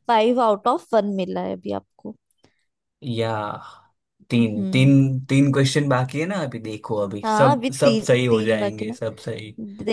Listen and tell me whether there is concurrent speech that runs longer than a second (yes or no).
yes